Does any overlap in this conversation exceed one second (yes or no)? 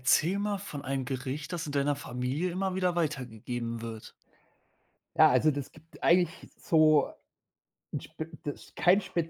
no